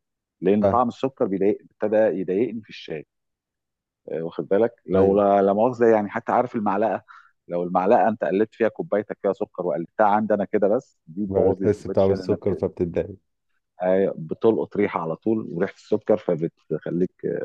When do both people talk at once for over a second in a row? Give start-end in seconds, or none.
11.2-12.7